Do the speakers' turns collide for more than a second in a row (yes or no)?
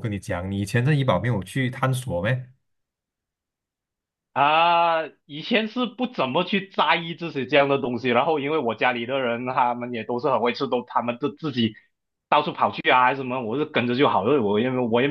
no